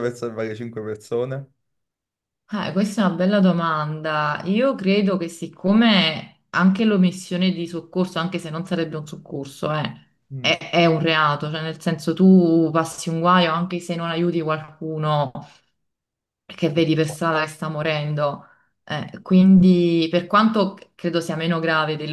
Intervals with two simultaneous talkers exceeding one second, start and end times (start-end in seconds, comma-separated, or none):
none